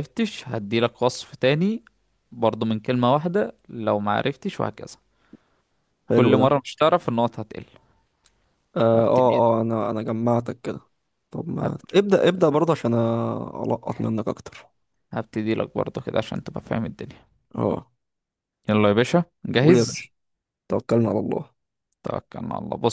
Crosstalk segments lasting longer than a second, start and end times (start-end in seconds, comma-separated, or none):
none